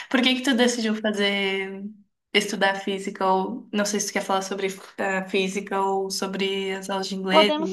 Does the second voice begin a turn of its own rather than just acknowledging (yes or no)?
yes